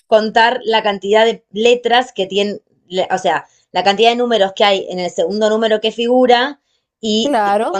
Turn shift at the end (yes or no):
no